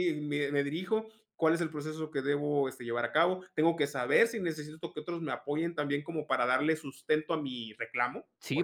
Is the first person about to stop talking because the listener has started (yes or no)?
yes